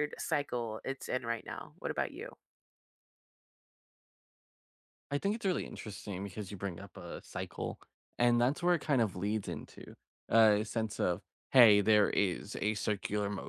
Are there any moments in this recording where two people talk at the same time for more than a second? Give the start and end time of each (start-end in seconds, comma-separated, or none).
none